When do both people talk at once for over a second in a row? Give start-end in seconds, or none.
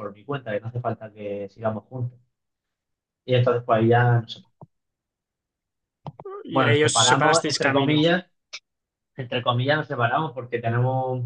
6.5-8.0